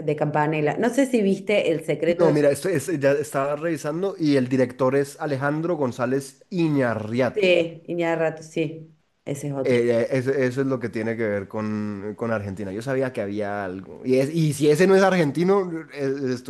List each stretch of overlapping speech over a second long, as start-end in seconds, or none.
none